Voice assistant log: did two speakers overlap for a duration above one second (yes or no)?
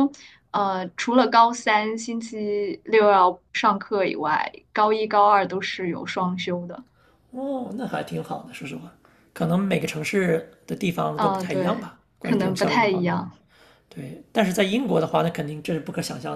yes